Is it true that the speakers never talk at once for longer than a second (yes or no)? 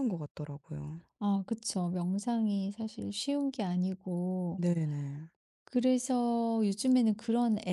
yes